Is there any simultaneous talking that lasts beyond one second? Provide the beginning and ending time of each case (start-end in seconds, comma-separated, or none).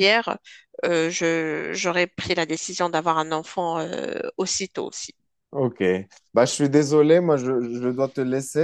none